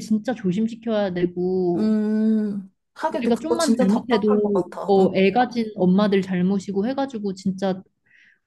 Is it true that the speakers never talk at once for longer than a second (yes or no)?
no